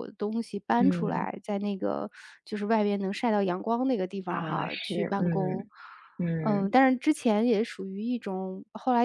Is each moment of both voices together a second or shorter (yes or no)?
no